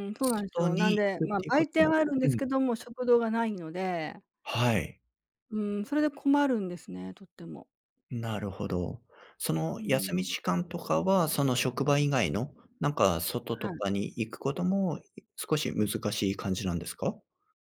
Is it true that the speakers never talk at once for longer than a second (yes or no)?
no